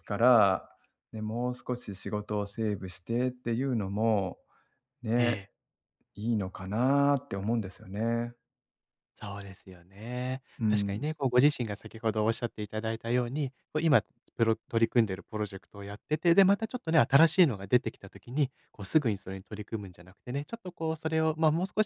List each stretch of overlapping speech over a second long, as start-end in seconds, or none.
none